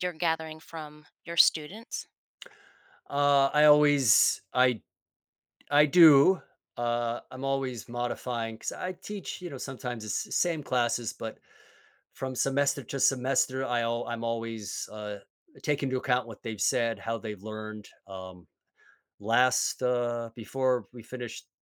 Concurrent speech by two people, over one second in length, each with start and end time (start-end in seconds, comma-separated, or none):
none